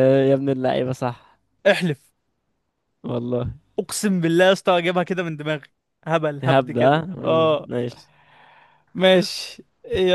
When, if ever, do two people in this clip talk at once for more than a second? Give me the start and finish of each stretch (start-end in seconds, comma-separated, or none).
6.4-7.7